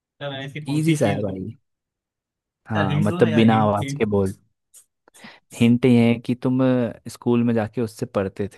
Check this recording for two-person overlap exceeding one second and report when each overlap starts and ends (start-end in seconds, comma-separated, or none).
2.8-4.3